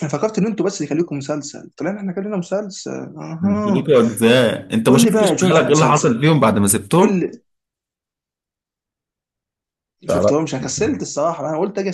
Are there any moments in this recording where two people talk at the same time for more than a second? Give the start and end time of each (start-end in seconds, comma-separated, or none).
4.9-6.2